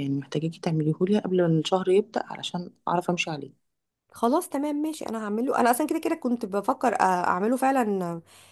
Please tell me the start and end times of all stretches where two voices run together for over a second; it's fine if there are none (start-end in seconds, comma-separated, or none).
none